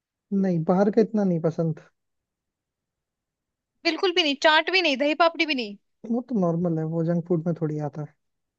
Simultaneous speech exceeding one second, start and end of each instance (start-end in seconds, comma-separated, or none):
none